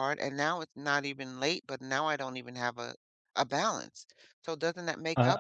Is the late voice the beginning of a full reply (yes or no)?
yes